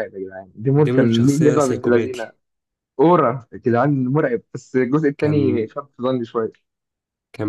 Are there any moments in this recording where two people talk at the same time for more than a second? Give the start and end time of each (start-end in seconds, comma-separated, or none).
0.8-2.3